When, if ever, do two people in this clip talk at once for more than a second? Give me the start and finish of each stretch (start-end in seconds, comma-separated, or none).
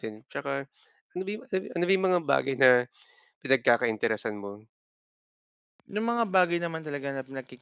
none